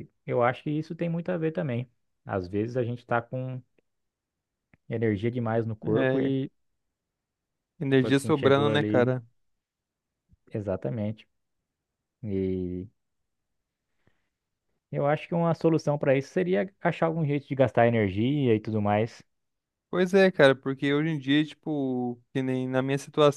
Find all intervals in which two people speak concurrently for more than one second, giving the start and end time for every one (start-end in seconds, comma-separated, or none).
7.9-9.1